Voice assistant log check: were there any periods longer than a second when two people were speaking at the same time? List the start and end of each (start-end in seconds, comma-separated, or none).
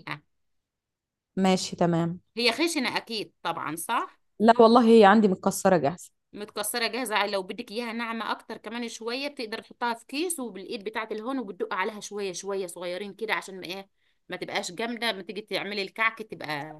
none